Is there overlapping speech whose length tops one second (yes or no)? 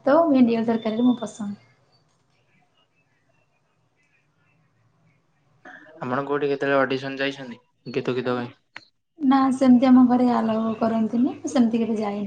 no